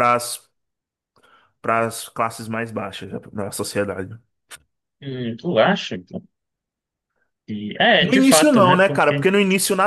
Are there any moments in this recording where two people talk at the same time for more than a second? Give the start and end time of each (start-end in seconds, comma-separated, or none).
8.0-9.3